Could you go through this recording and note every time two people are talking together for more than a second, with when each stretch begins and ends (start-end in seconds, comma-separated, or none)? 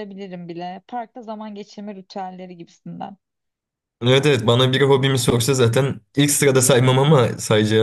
none